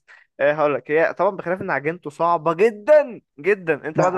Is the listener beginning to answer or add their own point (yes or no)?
yes